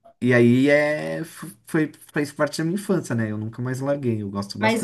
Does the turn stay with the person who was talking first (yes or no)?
no